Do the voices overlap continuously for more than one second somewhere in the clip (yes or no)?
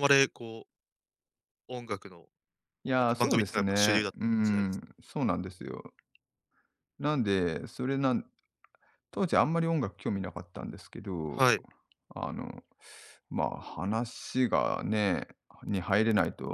yes